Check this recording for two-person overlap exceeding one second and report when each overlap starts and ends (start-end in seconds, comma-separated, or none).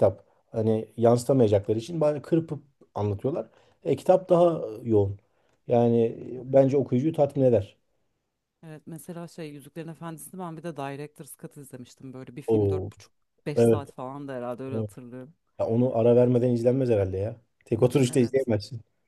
none